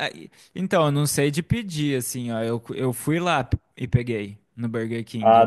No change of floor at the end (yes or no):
yes